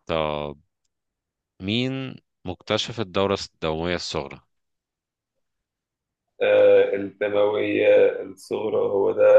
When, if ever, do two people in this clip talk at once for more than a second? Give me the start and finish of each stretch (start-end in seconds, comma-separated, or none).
none